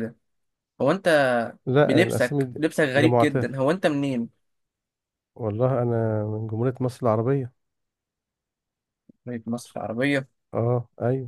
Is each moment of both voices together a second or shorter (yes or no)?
no